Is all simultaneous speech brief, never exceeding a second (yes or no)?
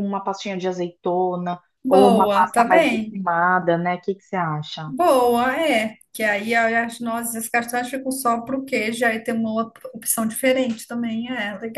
no